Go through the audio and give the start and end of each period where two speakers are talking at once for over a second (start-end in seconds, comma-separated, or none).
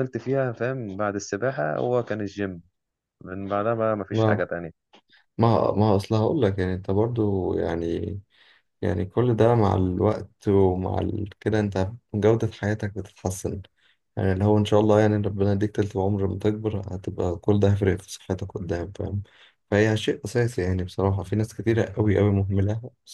none